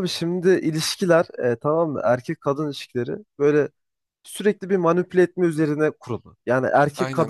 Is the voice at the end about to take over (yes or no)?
no